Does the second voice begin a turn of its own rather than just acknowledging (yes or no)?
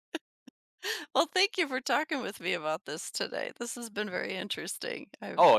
yes